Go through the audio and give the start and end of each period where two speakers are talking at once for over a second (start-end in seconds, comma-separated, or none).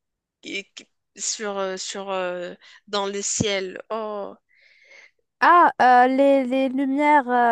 none